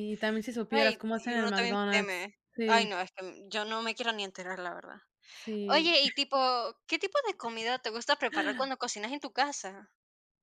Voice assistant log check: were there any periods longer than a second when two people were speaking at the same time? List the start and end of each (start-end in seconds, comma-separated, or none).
0.7-2.9